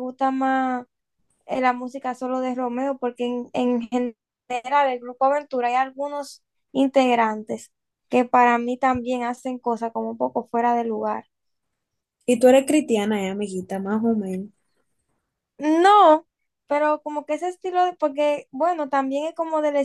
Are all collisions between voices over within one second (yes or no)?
yes